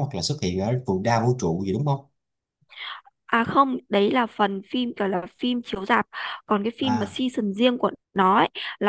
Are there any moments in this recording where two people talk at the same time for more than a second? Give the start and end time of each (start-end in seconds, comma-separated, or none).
none